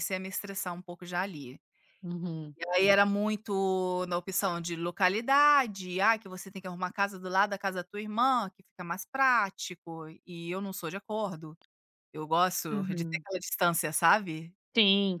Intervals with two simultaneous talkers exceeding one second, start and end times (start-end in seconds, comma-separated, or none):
none